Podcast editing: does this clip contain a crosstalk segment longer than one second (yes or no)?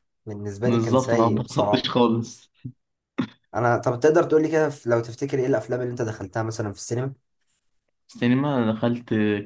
yes